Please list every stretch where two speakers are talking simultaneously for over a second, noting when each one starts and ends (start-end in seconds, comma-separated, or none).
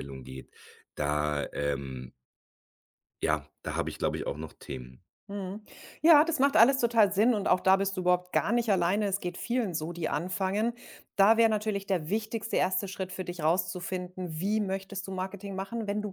none